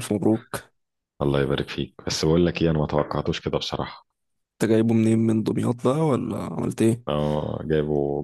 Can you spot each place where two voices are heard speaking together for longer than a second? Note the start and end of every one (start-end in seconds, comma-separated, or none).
none